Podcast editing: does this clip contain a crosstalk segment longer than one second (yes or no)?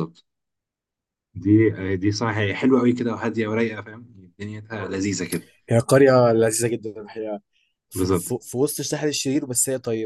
no